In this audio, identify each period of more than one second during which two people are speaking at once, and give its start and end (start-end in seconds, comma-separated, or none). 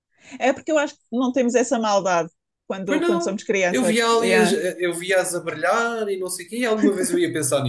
2.8-4.5